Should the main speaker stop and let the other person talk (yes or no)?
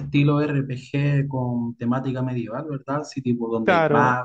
yes